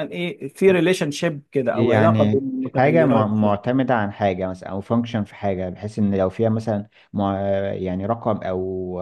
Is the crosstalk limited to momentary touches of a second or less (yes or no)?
no